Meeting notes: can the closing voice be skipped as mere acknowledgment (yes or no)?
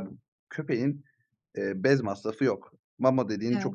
yes